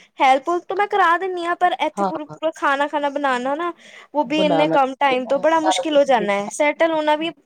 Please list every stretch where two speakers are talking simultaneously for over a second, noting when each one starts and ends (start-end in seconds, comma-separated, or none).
4.3-6.5